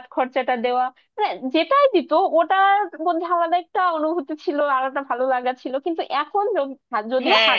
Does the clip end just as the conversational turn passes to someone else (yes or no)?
yes